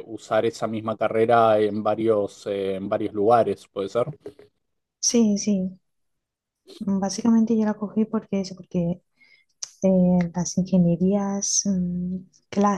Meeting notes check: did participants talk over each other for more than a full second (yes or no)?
no